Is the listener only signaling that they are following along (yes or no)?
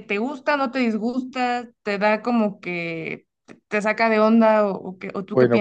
no